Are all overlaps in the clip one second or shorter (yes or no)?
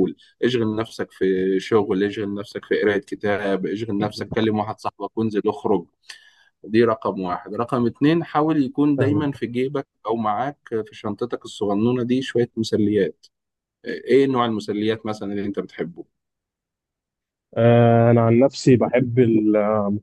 yes